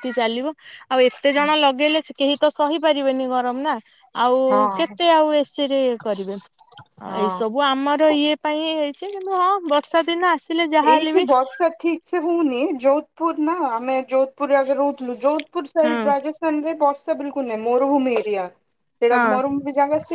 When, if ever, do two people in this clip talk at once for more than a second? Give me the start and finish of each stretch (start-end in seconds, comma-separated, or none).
none